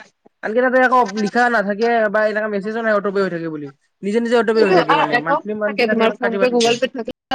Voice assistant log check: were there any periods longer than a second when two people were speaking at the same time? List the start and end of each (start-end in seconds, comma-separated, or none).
4.6-6.7